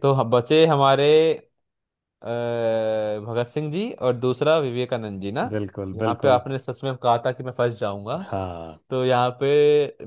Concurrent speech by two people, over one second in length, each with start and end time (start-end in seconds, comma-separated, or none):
none